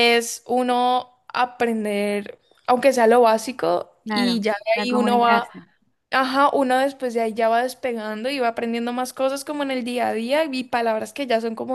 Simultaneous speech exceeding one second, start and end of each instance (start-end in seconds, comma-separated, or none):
4.0-5.5